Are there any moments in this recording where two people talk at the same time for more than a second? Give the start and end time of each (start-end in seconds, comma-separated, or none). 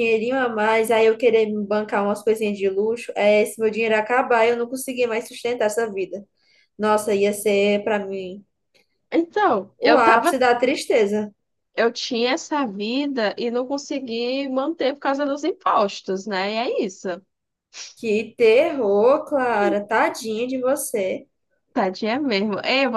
none